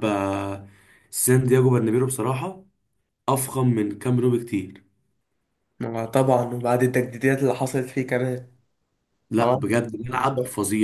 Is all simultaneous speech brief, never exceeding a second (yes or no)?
yes